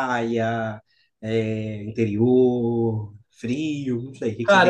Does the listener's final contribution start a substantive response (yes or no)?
yes